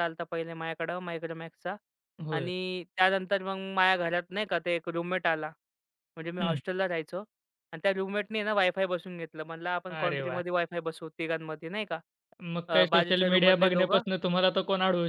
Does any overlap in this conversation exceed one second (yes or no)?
yes